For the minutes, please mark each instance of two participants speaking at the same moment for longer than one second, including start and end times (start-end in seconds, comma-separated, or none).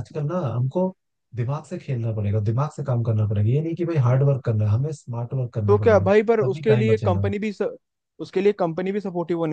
5.7-7.3